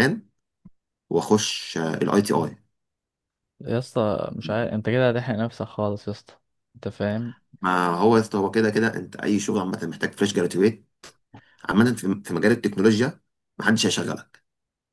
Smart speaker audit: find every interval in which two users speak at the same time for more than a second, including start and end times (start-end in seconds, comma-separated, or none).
none